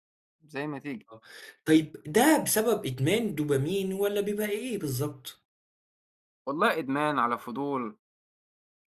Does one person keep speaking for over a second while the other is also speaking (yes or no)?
no